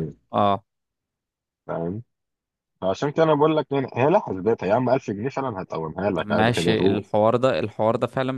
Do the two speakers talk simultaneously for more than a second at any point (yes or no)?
no